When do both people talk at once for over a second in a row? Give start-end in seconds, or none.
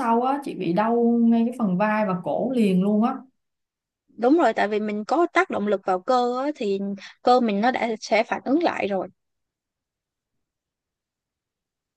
none